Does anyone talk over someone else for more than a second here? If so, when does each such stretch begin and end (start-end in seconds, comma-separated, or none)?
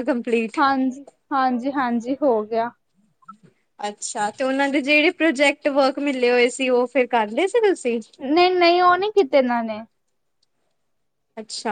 none